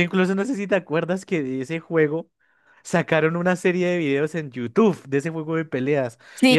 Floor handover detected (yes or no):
no